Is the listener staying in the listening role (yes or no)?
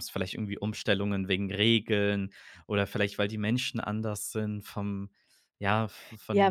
no